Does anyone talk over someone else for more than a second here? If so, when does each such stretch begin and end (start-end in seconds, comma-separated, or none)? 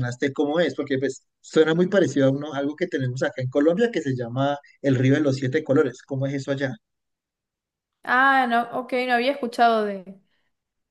none